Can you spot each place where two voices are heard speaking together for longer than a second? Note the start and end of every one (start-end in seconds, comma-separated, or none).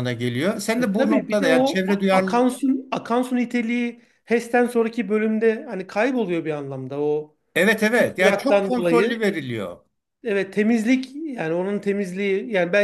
0.8-2.5, 7.9-9.3